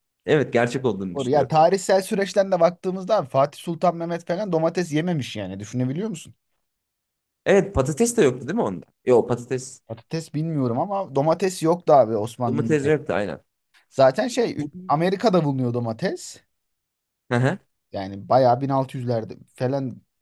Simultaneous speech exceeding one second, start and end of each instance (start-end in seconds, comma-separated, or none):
none